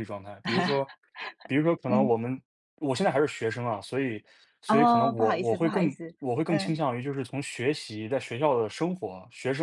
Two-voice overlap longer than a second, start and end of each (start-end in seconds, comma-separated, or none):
4.7-6.8